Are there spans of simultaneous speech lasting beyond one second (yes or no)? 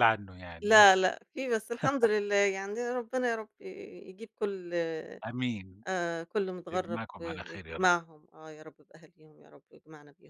yes